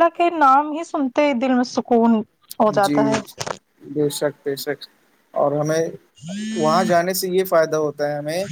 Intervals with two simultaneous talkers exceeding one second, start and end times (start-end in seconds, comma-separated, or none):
none